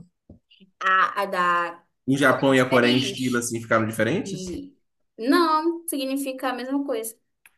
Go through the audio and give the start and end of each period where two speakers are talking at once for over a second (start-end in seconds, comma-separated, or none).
2.2-3.5